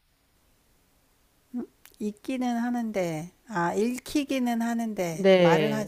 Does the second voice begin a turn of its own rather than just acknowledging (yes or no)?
yes